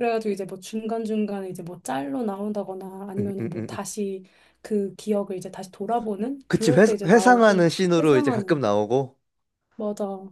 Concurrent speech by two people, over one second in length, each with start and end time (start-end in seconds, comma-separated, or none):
6.5-8.6